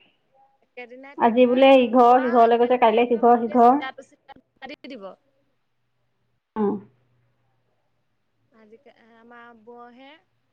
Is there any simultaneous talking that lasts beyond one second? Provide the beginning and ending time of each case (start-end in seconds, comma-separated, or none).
1.2-3.3